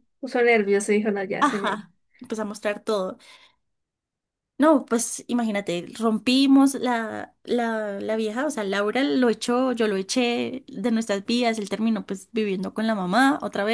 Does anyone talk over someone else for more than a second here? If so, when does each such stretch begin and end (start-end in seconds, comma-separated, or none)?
none